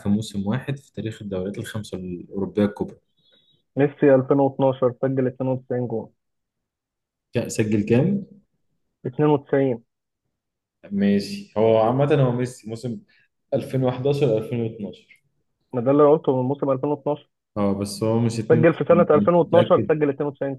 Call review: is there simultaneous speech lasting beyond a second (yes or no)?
yes